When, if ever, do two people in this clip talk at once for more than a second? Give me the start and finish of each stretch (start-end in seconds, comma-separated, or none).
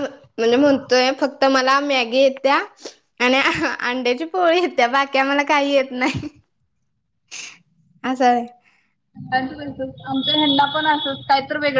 none